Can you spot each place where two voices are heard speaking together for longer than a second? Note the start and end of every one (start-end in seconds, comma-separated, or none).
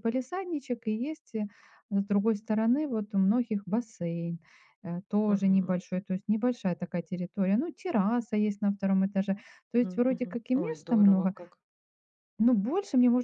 9.8-11.3